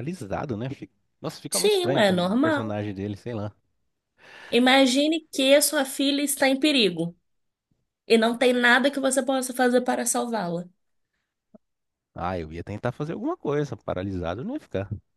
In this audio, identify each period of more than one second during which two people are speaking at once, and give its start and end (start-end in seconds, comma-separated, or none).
1.5-2.8